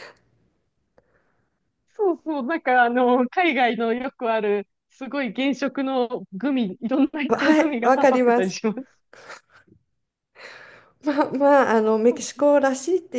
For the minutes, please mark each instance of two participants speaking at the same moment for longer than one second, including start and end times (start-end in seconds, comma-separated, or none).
7.3-8.6